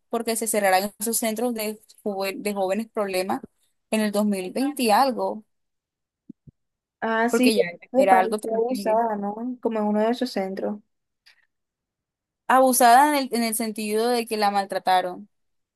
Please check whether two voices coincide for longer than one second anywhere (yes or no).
yes